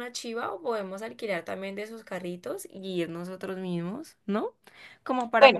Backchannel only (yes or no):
no